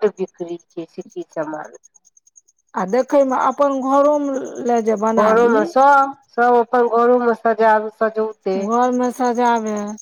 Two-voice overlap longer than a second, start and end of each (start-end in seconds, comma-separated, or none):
none